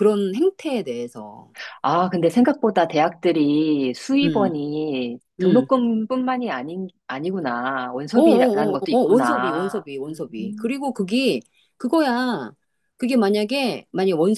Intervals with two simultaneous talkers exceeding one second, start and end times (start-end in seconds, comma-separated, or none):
8.1-10.3